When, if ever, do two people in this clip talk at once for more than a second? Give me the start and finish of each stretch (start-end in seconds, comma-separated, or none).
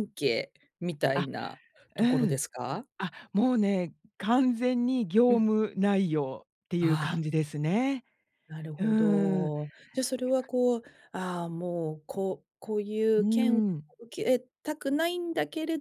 none